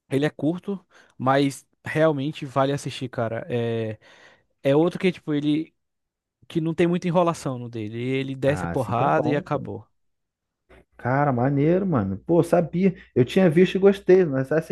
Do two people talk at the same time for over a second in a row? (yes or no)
yes